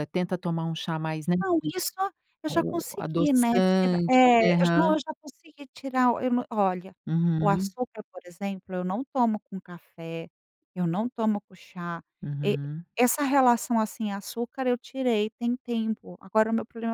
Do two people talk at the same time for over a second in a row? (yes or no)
yes